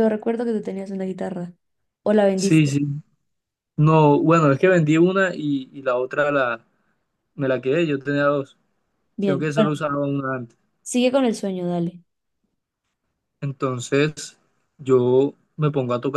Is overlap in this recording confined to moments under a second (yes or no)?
yes